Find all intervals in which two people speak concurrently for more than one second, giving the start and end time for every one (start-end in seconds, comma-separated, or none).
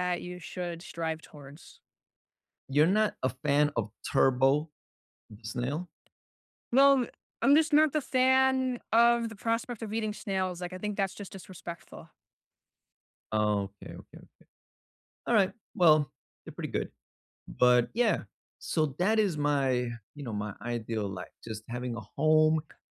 none